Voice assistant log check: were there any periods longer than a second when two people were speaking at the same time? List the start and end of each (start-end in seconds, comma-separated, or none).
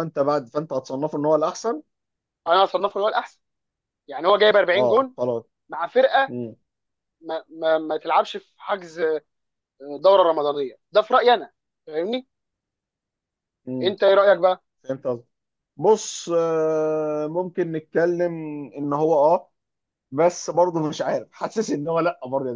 none